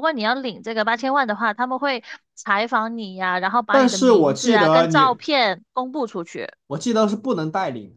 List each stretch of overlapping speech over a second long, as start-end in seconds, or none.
3.7-5.2